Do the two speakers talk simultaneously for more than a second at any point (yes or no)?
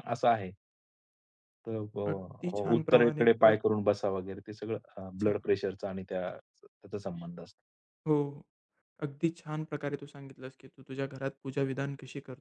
yes